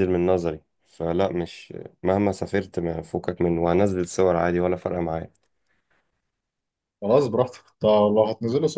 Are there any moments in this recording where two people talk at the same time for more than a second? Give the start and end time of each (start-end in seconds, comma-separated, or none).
none